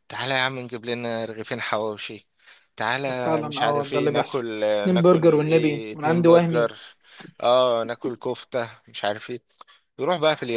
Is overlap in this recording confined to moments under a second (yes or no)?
no